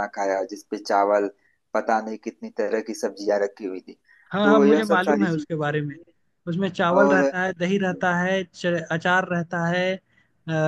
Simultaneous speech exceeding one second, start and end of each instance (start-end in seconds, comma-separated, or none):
4.4-6.0